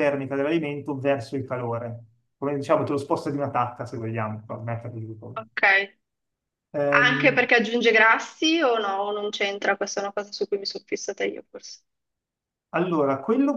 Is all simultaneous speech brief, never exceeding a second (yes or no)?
yes